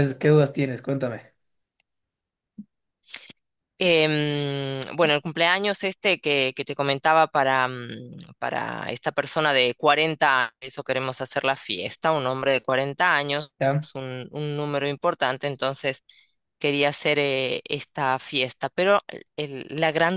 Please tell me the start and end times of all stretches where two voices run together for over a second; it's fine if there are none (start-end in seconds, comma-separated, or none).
none